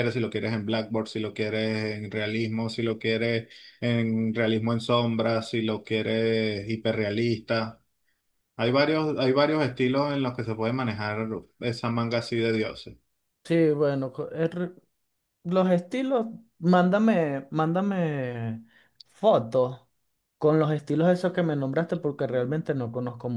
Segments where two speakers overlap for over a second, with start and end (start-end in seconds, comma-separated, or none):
none